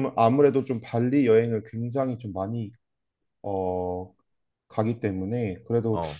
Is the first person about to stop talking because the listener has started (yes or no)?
no